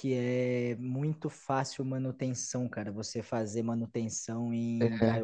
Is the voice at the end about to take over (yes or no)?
no